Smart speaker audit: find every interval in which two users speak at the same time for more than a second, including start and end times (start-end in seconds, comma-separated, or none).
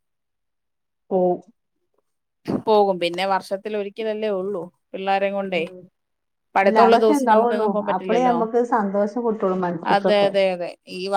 6.7-8.4